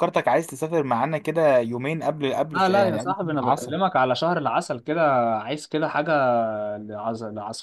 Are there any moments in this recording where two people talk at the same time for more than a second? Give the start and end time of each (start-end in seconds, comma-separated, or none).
2.5-3.8